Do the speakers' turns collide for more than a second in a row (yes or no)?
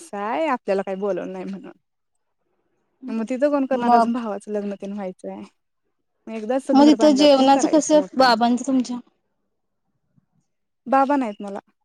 yes